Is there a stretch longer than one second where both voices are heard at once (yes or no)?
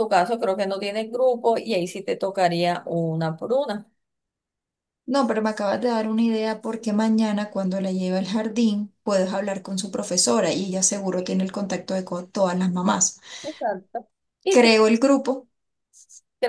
no